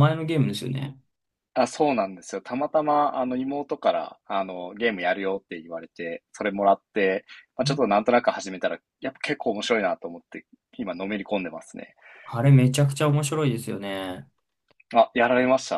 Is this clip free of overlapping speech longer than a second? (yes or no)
yes